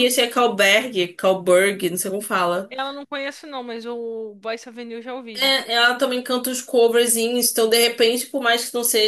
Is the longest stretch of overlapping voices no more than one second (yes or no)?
yes